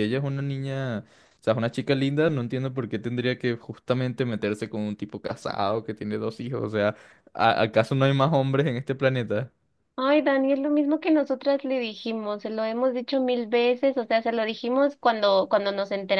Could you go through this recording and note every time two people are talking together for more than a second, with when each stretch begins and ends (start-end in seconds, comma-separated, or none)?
none